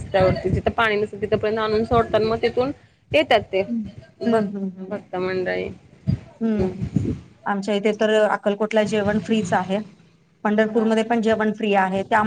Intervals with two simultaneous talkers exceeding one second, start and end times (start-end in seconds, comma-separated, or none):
none